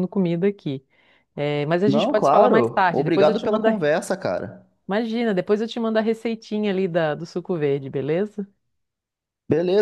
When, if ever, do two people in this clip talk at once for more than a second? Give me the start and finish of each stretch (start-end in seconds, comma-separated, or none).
1.9-3.8